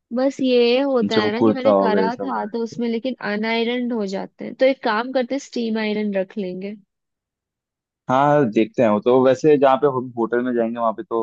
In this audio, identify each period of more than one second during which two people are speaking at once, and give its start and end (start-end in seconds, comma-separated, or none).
1.1-2.8